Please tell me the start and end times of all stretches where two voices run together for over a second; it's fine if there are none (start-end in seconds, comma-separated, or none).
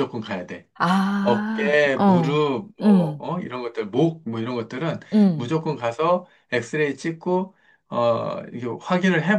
1.2-3.2